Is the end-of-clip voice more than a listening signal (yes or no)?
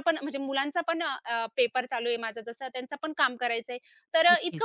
no